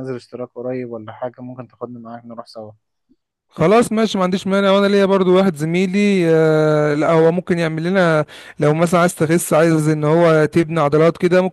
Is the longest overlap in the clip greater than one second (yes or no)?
no